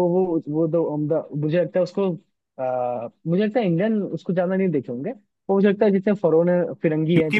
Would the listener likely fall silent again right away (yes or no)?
no